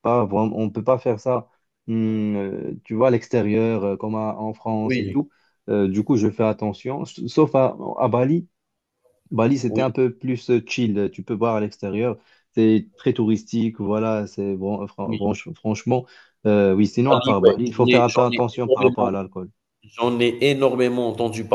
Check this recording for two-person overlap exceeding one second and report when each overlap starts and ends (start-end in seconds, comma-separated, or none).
17.1-19.1